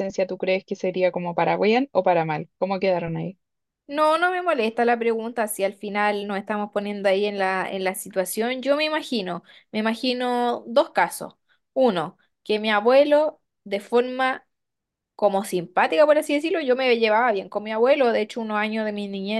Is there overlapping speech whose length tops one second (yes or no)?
no